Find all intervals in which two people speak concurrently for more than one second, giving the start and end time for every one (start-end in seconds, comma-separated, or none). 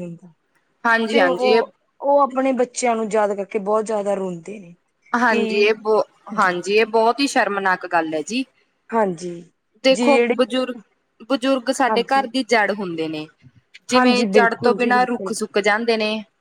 13.9-15.3